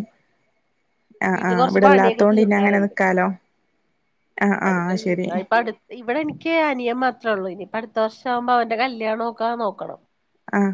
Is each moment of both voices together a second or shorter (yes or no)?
no